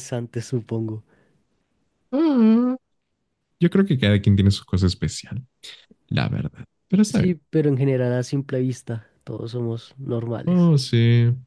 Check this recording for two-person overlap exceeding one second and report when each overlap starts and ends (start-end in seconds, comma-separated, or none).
none